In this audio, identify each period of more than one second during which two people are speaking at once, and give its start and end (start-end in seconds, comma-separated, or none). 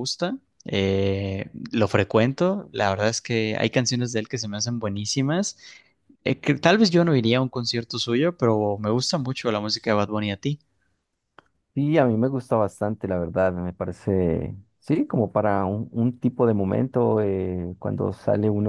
none